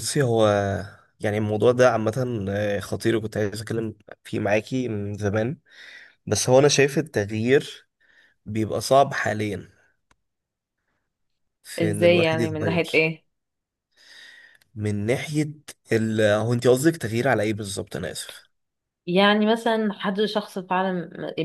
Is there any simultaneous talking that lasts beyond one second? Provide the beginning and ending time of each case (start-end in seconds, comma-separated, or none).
11.8-13.1